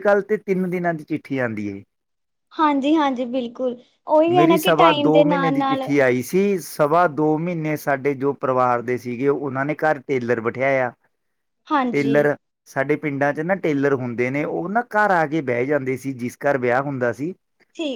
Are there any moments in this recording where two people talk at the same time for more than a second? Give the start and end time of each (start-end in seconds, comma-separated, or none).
none